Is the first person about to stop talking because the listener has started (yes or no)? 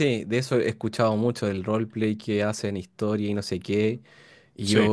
no